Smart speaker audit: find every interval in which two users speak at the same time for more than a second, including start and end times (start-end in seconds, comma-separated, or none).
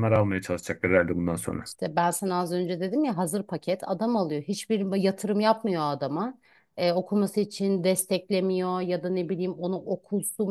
none